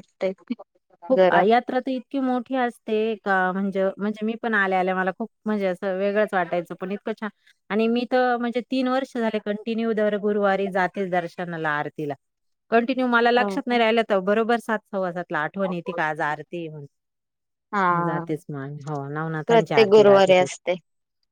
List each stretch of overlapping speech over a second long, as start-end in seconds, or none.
19.5-20.7